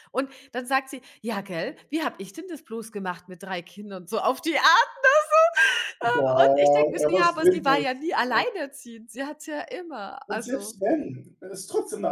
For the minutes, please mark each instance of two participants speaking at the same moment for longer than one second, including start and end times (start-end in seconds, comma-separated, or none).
6.0-8.4